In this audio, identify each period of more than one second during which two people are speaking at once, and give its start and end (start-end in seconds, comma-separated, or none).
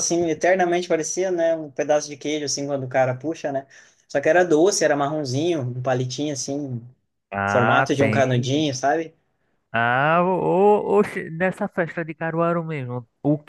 7.5-8.7